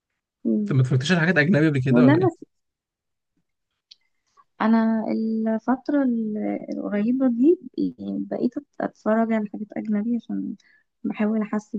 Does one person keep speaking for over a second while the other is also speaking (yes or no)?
no